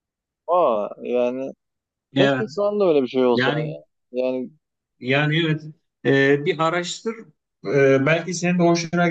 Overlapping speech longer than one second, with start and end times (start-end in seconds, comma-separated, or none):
none